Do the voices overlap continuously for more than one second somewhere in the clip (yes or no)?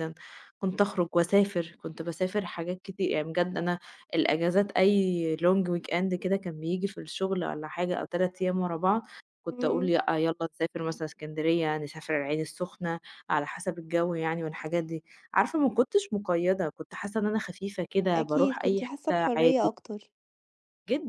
yes